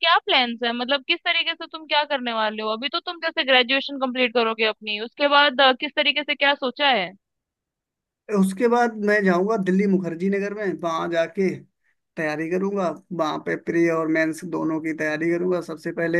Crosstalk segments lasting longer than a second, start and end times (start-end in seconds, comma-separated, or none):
none